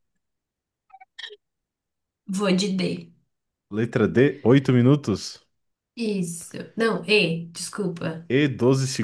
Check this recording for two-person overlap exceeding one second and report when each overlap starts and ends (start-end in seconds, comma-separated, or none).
none